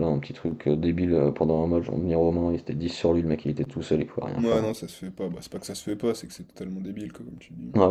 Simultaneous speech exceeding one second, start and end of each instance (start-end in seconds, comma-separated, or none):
none